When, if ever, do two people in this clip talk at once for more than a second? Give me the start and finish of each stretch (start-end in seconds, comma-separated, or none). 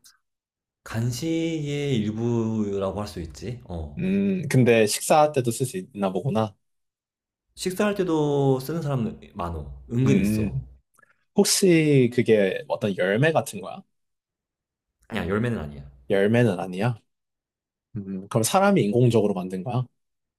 none